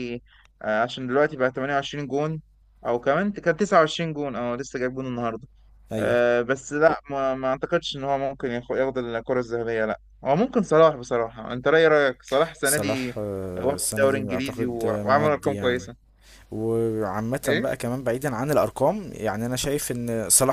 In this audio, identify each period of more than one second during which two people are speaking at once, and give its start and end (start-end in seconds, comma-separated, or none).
12.6-15.9